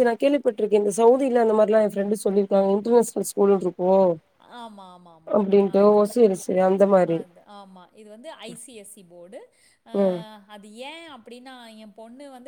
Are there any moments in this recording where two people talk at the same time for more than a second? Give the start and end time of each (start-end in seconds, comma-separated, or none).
none